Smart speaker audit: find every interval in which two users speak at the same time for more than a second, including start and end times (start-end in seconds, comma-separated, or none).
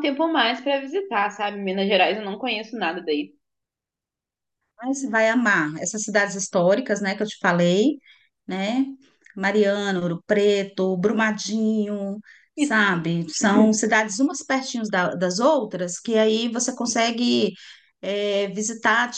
none